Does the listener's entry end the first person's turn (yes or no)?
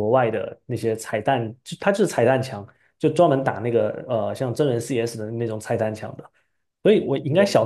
no